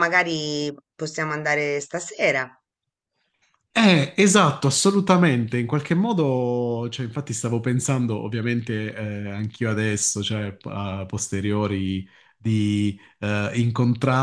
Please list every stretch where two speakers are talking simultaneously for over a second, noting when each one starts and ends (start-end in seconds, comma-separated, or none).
none